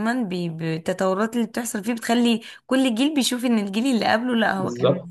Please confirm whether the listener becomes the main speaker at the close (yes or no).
yes